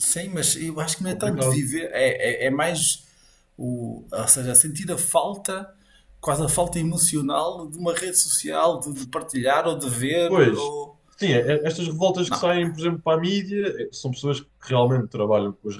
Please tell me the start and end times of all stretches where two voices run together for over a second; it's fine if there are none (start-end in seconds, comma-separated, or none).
none